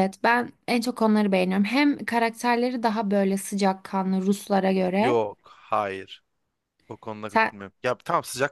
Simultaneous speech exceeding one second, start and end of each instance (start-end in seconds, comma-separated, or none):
none